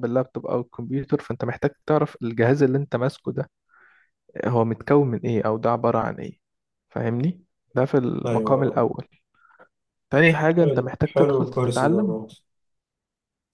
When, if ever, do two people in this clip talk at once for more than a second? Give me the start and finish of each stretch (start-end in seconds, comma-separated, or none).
10.6-12.2